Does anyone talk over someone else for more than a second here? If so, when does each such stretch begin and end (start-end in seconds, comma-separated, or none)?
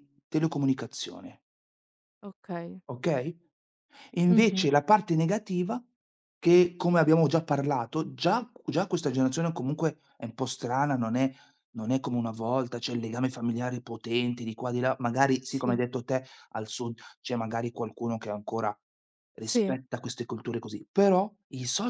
none